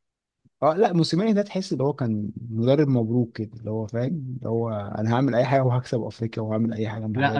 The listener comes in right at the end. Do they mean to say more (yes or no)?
yes